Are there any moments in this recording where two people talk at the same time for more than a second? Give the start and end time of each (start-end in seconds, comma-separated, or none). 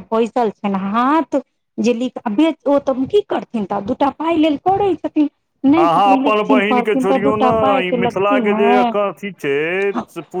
5.8-8.8